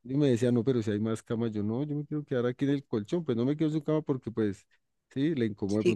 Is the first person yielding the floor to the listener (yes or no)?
no